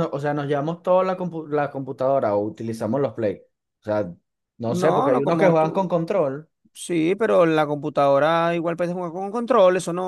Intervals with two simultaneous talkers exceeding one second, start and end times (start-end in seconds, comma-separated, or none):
4.7-6.0